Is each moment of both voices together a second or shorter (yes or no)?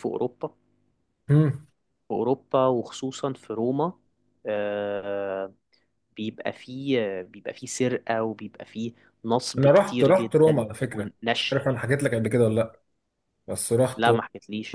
no